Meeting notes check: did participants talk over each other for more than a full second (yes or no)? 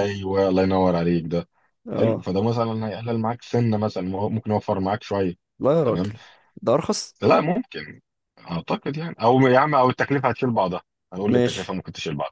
no